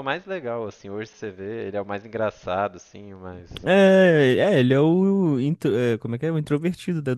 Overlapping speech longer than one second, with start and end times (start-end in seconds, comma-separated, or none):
none